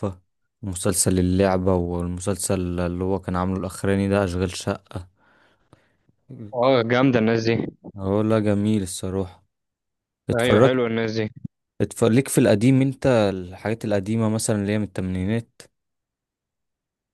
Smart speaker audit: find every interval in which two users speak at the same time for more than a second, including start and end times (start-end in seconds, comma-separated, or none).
none